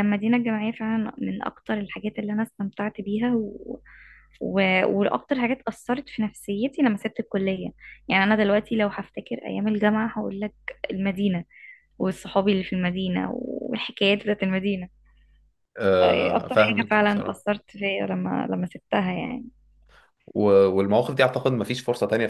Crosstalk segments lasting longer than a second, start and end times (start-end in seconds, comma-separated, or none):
16.0-17.5